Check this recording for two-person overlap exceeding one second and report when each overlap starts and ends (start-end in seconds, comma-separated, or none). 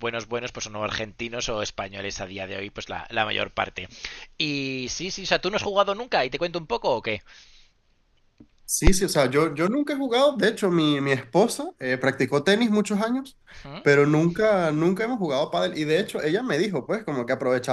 none